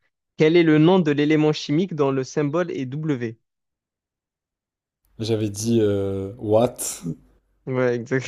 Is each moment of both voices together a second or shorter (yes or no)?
yes